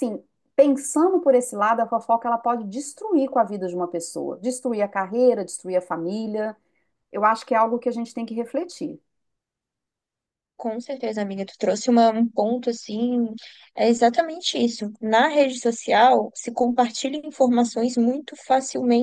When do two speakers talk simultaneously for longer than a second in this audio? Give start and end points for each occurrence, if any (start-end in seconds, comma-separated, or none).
none